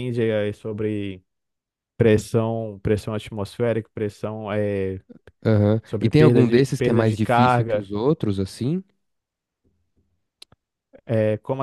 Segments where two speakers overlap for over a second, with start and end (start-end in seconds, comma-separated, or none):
5.8-7.8